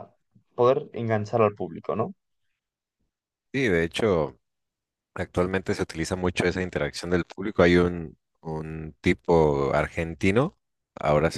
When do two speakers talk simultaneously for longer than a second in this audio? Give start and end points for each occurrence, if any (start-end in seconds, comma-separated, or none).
none